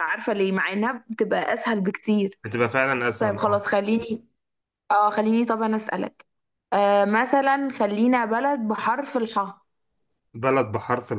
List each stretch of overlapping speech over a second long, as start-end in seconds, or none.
none